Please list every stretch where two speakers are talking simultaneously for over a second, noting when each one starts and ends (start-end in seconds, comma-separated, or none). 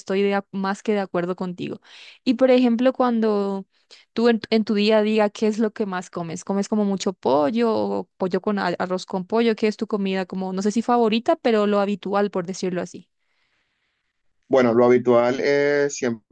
none